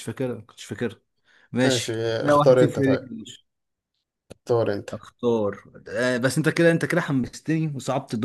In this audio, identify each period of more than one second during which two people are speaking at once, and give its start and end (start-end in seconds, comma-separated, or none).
1.6-3.0